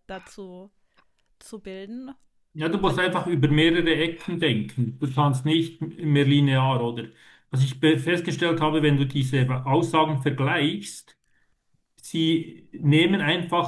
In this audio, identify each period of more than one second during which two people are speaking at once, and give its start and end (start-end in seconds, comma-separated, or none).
none